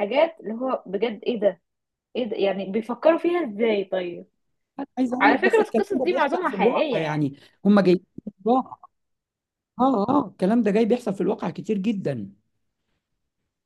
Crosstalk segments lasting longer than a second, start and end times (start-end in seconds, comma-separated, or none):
5.2-7.3